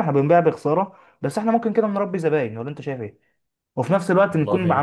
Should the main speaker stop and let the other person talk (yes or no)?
no